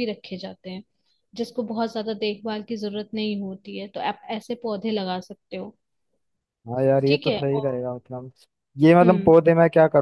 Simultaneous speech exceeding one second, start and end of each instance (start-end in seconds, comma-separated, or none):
none